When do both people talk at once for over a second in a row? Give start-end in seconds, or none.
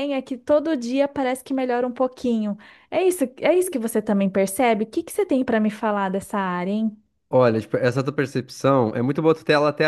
none